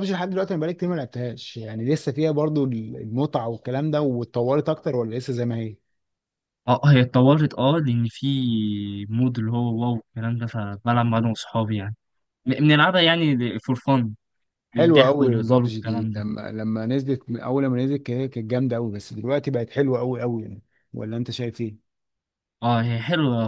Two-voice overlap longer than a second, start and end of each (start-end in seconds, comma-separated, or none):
14.7-16.2